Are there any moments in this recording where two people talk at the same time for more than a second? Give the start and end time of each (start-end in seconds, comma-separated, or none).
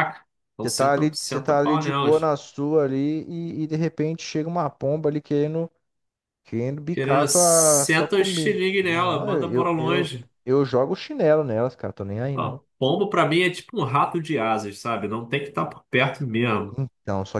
0.6-2.3, 6.9-10.3